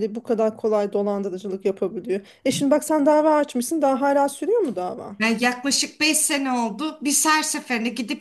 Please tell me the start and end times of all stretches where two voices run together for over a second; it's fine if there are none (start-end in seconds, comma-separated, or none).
none